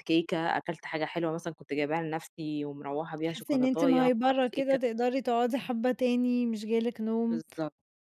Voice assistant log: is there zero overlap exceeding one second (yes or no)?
no